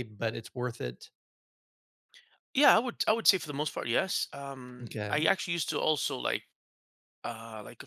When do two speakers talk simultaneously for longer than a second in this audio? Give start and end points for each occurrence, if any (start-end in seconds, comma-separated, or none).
none